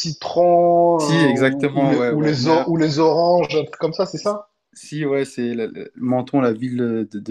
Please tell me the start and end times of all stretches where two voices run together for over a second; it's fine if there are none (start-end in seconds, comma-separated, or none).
1.0-2.5